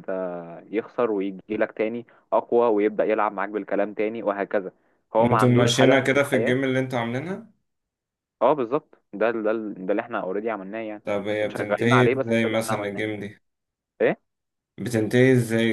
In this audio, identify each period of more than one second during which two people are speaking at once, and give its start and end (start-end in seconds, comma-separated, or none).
5.2-6.6, 11.5-13.0